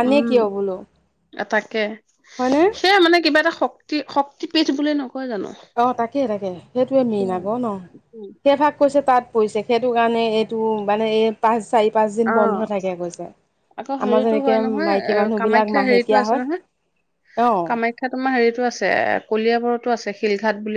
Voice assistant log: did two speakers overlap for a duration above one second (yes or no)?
yes